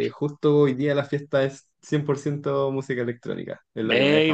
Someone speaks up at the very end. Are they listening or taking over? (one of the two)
taking over